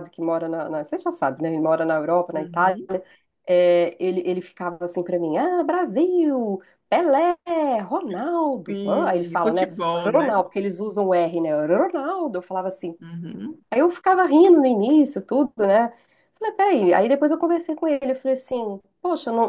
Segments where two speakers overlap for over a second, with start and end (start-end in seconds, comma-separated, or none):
8.7-10.3